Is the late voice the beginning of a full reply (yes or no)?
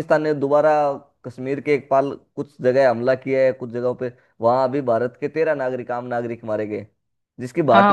yes